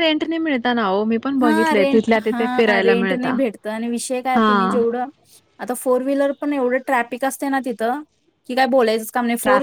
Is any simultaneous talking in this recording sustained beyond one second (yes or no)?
yes